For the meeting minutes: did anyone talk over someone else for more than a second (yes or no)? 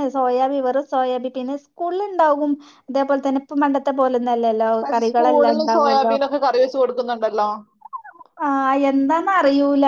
yes